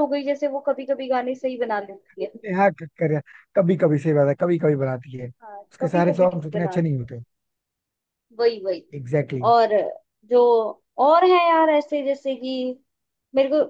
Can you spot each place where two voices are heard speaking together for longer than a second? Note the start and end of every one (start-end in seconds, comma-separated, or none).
5.4-7.1